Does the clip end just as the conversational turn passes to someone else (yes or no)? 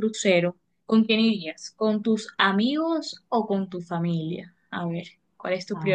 yes